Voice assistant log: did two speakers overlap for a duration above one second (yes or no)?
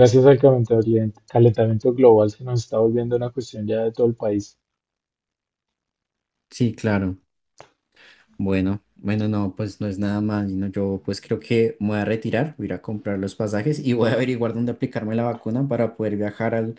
no